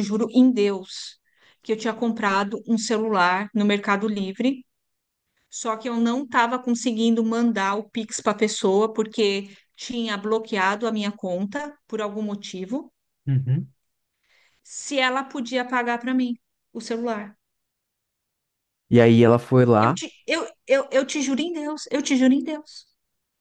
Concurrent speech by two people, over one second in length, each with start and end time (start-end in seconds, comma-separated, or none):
none